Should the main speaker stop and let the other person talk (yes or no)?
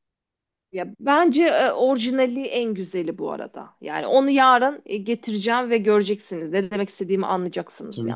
yes